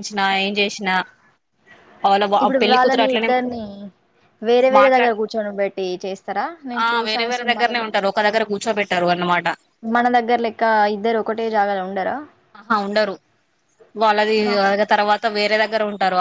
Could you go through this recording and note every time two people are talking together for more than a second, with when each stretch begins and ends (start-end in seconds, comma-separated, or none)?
none